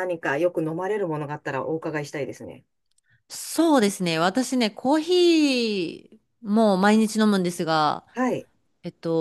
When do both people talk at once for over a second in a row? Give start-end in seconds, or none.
none